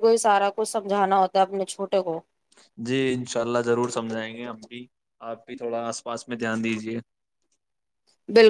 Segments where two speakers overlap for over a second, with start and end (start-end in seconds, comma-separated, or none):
none